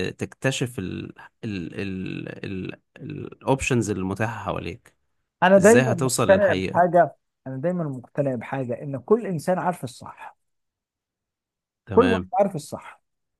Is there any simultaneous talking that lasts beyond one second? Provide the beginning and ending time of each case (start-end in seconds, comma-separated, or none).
5.6-7.0